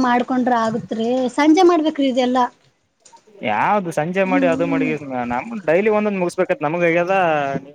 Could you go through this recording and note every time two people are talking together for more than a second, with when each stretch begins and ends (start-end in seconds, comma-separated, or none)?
none